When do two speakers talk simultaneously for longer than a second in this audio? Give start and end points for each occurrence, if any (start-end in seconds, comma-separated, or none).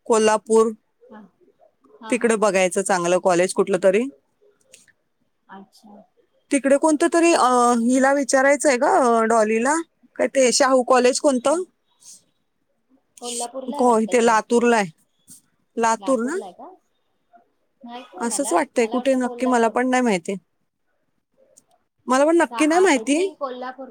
18.3-19.7